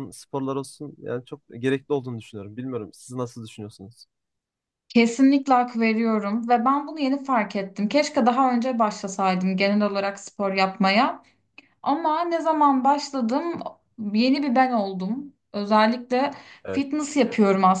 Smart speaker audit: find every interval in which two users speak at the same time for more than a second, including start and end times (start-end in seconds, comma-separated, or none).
none